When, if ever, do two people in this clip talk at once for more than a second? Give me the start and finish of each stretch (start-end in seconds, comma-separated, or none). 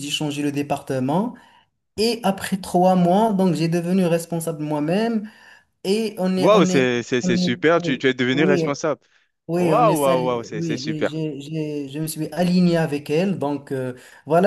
6.4-8.6, 9.6-11.2